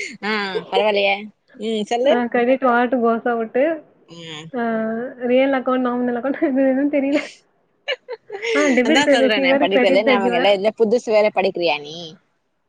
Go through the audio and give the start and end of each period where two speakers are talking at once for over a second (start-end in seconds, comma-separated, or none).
8.9-10.5